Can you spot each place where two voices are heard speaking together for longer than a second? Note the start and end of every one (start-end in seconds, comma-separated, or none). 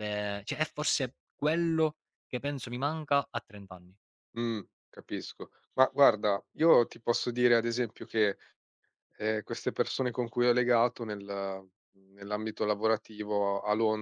none